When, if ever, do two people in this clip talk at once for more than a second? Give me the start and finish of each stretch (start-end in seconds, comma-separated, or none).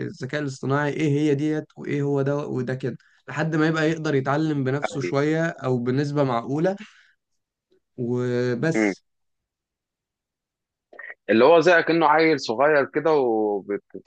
none